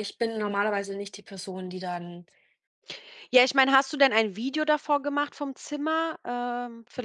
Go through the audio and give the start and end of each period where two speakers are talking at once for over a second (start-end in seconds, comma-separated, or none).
none